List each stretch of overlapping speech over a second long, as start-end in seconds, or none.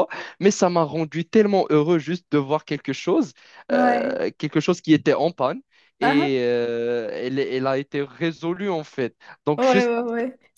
none